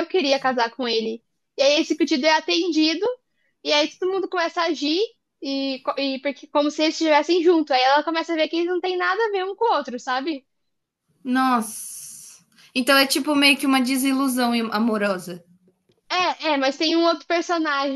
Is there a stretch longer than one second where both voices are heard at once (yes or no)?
no